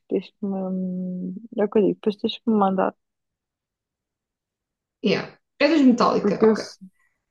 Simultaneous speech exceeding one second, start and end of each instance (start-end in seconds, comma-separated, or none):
none